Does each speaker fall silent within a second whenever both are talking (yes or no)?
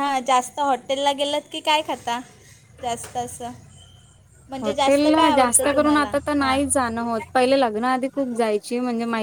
no